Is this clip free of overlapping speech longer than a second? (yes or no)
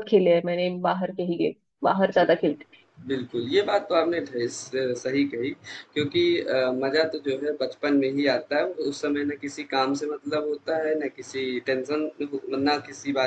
yes